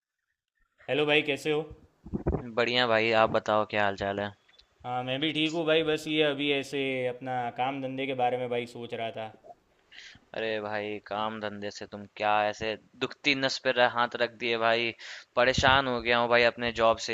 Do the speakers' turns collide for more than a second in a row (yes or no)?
no